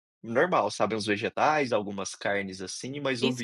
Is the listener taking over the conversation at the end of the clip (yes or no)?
yes